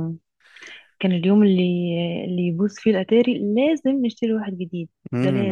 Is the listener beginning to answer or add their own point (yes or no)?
yes